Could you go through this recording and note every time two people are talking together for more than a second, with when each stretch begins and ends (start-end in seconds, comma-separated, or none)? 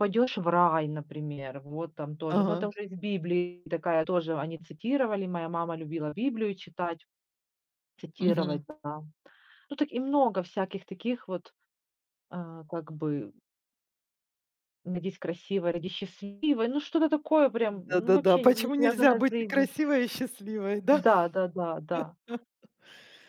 17.7-19.7